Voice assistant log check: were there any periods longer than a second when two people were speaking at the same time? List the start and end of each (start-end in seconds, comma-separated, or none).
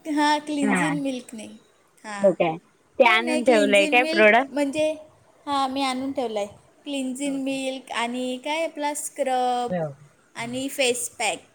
3.0-4.6